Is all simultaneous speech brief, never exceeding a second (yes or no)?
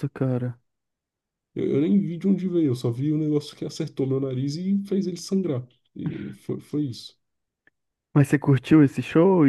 yes